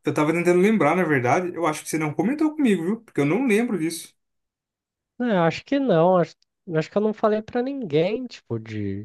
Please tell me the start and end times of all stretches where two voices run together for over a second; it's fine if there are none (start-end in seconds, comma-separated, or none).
none